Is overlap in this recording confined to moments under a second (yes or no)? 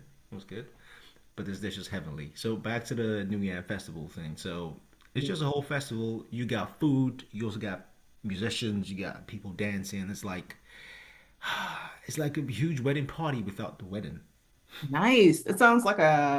yes